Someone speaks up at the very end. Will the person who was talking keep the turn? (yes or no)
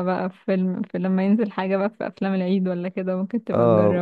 no